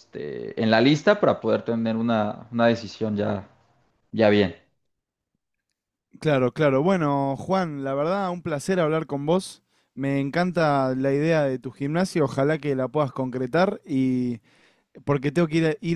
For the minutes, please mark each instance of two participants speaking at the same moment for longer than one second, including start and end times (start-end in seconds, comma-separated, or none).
none